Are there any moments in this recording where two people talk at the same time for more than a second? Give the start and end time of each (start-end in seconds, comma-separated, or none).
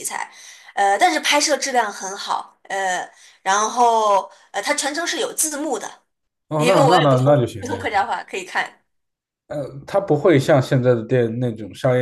6.6-8.0